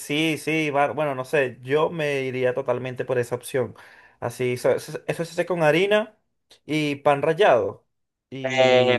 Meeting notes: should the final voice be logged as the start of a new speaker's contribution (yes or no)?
yes